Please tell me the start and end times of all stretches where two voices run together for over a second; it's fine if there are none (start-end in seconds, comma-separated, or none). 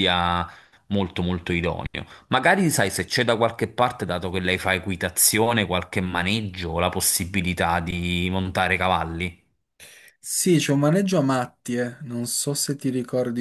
none